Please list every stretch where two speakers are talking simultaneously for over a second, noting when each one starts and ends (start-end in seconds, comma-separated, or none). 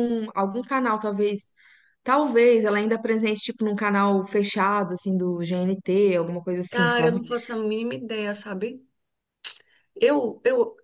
none